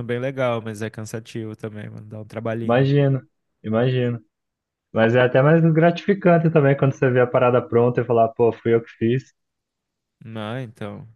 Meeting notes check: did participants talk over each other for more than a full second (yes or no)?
no